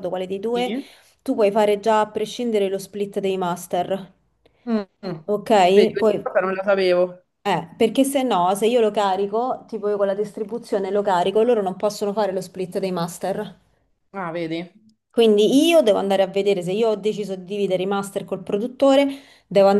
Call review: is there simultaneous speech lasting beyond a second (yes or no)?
no